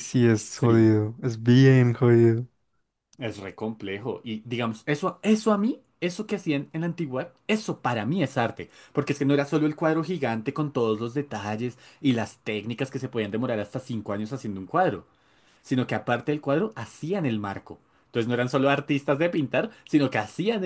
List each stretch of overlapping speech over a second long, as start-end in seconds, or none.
none